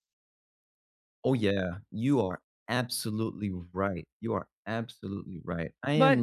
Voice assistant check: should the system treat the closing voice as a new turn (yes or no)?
no